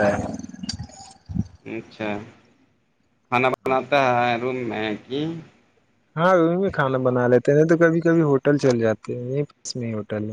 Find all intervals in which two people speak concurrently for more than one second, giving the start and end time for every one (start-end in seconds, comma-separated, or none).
none